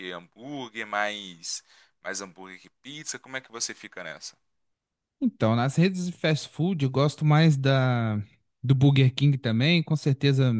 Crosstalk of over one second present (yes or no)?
no